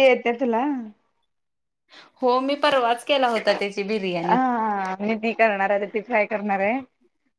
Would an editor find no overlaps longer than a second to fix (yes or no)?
yes